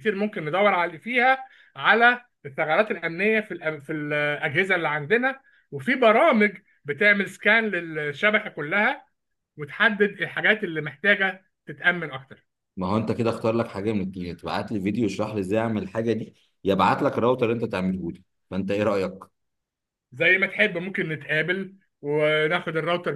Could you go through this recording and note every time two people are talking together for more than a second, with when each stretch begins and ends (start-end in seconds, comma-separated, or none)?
none